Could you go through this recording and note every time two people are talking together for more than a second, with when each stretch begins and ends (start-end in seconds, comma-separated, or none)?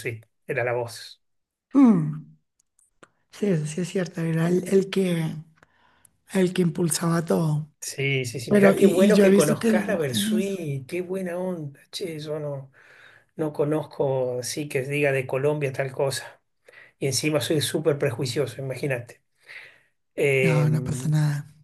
8.5-10.5